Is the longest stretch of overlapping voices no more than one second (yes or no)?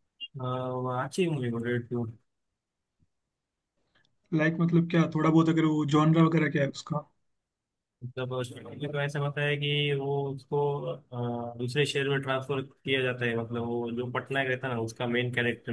yes